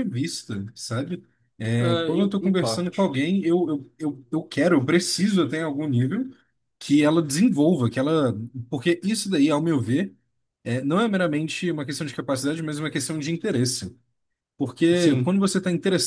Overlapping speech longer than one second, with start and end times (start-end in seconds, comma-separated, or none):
1.8-3.1